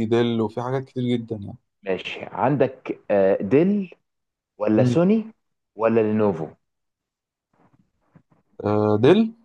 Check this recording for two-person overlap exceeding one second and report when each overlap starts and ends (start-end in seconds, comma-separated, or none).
none